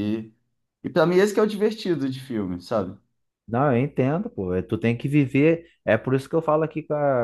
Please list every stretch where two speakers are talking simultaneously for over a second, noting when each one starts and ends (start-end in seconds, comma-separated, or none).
none